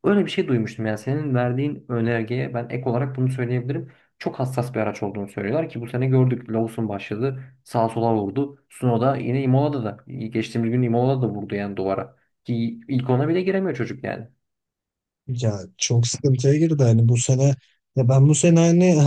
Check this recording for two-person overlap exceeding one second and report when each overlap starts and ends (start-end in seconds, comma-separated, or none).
none